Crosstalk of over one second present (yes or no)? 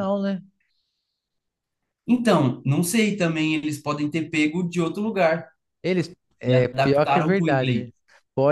yes